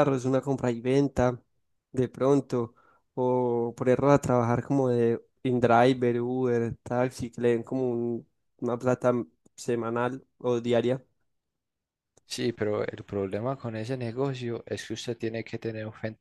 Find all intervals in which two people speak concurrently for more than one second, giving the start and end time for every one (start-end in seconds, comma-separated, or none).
none